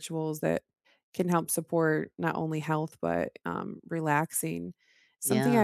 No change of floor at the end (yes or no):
yes